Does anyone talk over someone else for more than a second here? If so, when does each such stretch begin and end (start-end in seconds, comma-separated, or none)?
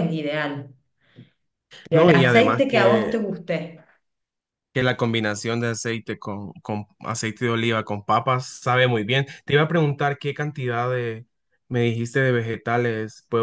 1.9-3.1